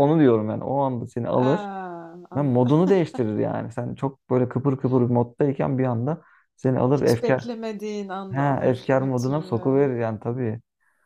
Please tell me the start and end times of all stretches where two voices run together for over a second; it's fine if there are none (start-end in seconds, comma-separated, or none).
8.3-9.7